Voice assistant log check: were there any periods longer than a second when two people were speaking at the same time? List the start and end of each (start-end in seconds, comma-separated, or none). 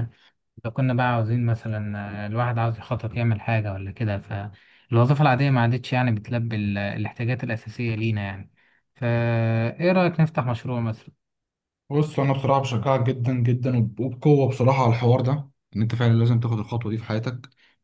none